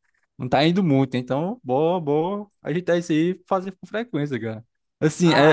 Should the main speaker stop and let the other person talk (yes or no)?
yes